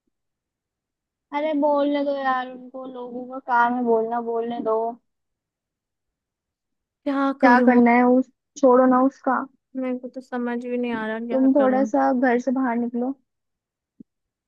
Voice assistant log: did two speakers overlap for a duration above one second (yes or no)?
no